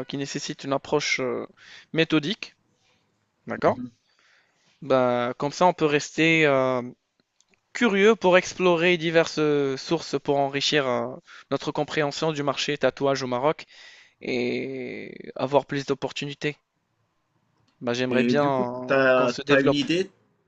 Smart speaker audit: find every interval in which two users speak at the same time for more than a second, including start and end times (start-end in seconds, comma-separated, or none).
18.1-19.8